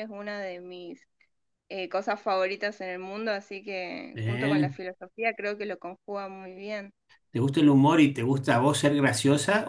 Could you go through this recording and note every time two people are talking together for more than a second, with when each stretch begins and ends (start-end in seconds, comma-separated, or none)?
none